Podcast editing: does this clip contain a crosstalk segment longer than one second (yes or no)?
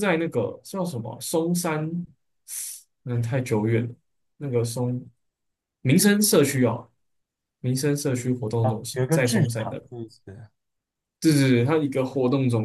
yes